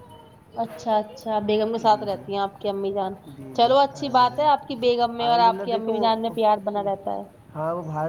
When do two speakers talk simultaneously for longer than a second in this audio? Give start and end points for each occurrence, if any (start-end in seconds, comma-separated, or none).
3.6-6.0